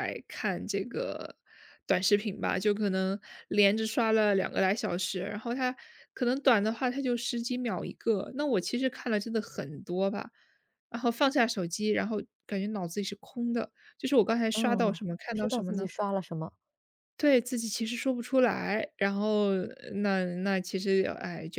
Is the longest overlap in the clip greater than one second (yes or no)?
yes